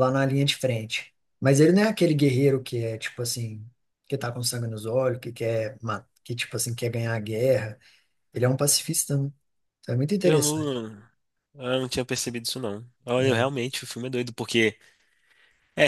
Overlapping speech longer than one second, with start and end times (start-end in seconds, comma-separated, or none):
none